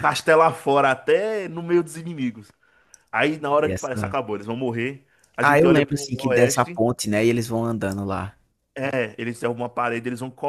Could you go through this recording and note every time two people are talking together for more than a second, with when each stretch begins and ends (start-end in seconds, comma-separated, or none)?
5.4-6.8